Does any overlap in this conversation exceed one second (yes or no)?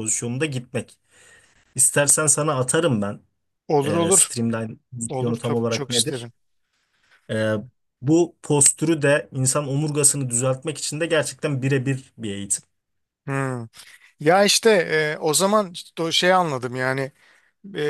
yes